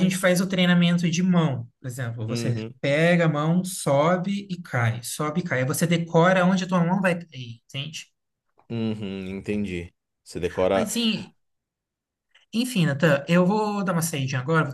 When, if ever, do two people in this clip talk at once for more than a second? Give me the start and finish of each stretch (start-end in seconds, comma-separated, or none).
none